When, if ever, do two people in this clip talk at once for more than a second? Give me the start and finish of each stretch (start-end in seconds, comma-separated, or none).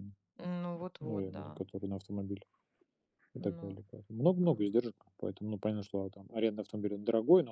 none